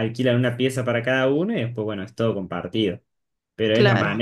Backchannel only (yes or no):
yes